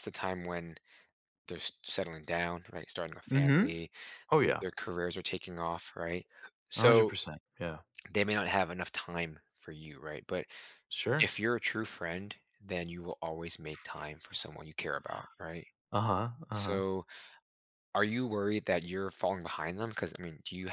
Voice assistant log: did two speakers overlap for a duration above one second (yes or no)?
no